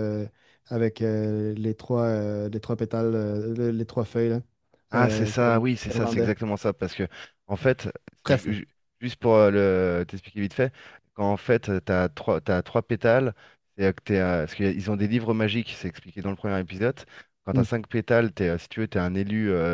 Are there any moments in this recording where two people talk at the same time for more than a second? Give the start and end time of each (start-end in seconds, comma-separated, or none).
4.9-6.3